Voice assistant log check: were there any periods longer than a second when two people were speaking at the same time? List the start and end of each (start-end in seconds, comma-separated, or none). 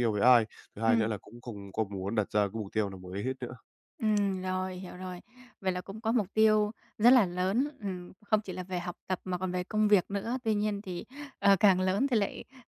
none